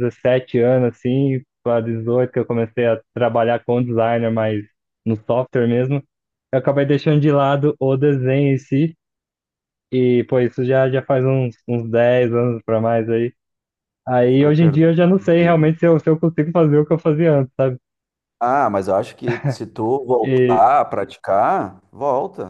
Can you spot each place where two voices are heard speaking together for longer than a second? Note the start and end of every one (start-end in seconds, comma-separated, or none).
14.4-15.7